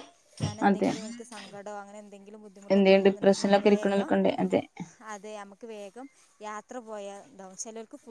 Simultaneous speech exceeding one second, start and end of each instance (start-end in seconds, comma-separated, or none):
2.7-4.1